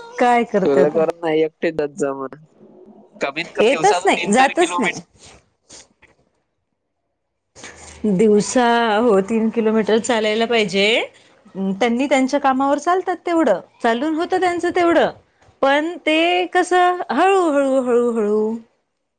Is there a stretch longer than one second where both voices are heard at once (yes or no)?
yes